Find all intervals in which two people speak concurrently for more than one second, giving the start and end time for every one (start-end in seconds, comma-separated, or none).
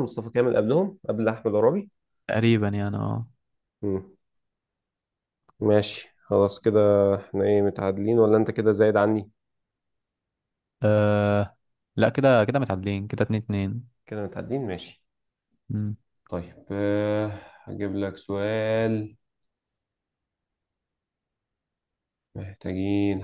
none